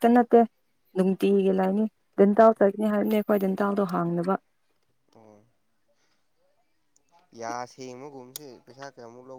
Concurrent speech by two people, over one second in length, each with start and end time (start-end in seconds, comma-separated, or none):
none